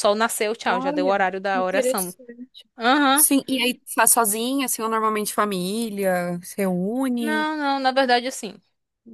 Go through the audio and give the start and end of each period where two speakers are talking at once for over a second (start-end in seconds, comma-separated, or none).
0.7-2.1